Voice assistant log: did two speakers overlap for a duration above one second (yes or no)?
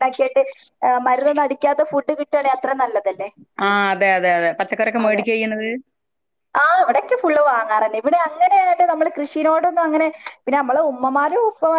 no